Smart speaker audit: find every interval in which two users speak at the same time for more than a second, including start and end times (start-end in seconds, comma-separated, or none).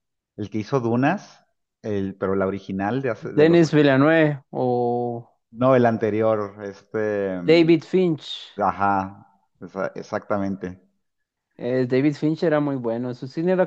none